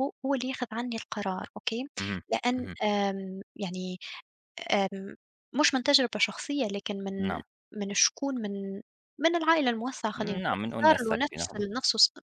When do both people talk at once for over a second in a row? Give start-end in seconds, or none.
10.2-11.7